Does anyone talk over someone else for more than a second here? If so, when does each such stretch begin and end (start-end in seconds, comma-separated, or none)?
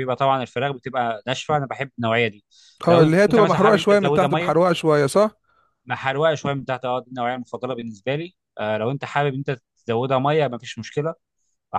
2.9-4.7